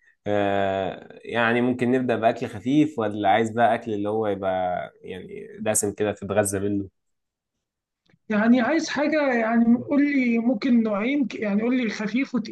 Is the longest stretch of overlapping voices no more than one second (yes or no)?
yes